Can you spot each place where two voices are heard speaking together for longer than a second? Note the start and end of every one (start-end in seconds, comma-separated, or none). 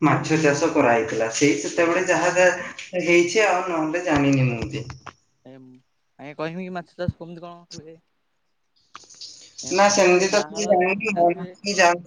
9.8-11.5